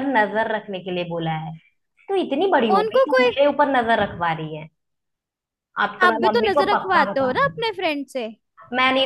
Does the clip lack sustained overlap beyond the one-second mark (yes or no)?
no